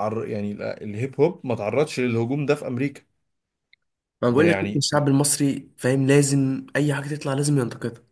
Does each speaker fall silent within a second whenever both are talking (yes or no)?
yes